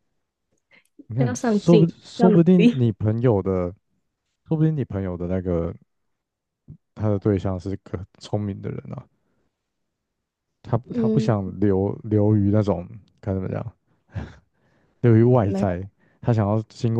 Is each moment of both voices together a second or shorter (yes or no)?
no